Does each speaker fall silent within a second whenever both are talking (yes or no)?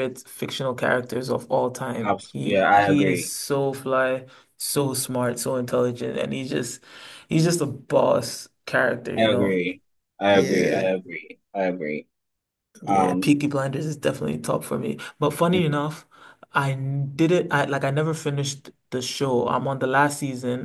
no